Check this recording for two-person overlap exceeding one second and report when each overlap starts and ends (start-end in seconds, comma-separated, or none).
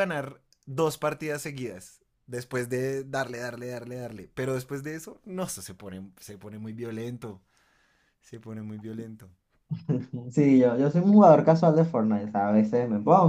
none